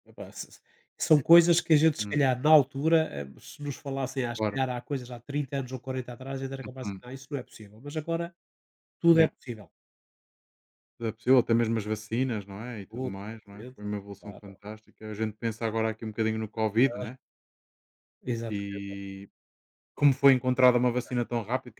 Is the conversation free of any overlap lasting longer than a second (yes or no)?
no